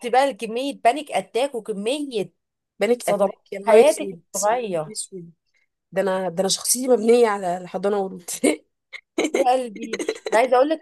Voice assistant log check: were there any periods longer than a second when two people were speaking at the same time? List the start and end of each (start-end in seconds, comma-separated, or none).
3.0-5.0